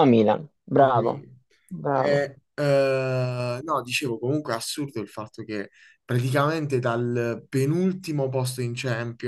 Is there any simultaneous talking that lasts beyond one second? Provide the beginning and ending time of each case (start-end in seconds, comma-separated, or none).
none